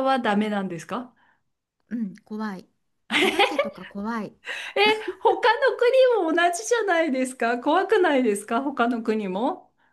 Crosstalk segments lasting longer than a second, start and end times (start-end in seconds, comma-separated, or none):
none